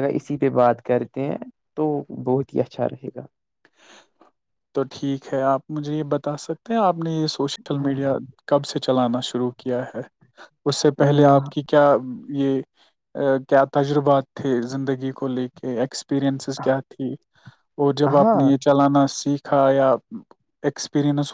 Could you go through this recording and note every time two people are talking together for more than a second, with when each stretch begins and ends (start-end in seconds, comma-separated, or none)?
none